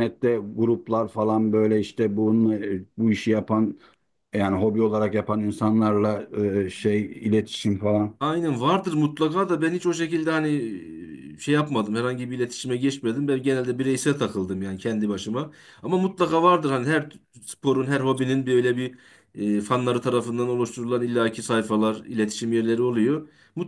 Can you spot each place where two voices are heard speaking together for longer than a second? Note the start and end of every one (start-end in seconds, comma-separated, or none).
none